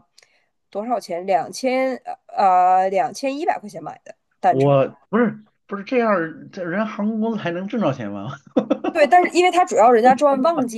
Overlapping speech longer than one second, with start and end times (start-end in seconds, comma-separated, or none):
none